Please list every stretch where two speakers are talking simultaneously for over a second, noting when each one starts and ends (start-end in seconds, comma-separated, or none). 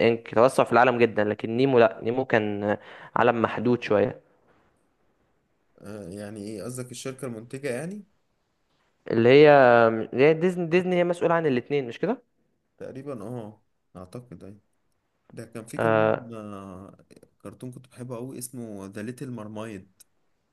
none